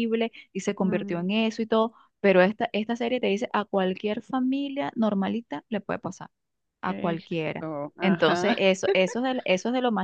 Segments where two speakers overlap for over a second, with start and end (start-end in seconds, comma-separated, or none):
6.8-8.6